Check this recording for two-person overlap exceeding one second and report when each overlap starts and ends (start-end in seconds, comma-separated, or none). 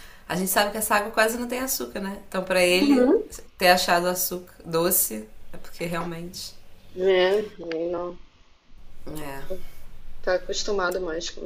none